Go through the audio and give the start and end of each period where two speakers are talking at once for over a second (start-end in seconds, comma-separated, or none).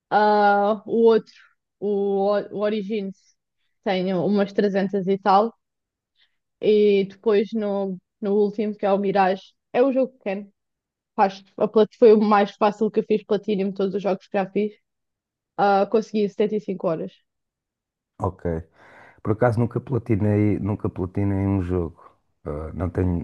none